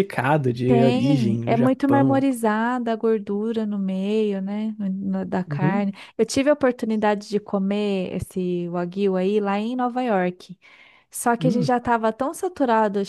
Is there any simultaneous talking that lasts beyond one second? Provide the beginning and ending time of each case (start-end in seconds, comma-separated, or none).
0.7-2.2